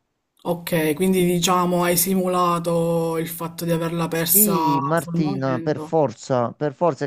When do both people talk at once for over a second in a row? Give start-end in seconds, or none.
4.1-5.9